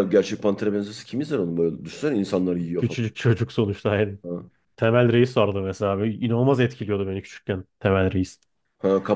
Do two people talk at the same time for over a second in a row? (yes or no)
no